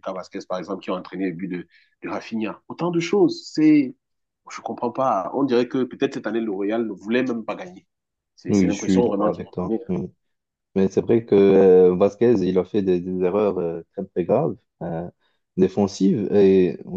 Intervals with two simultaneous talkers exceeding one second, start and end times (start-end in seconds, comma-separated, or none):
8.5-9.8